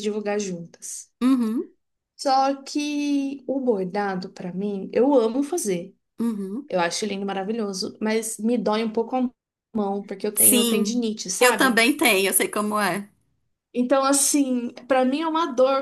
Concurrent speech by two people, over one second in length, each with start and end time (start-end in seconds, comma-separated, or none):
10.3-11.8